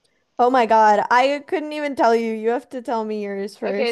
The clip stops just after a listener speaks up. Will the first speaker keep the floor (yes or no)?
no